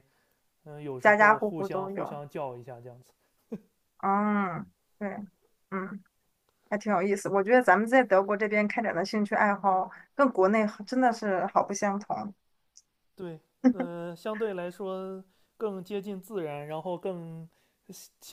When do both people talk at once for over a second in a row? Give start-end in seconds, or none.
1.0-2.2